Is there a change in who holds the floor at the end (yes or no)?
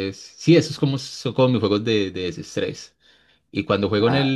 no